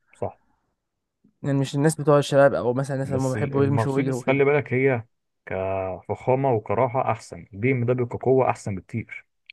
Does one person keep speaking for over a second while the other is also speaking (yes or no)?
yes